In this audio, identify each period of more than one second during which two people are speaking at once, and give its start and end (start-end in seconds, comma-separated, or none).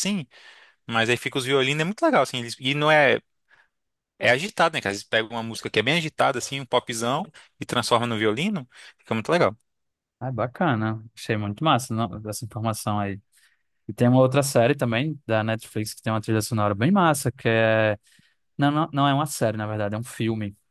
none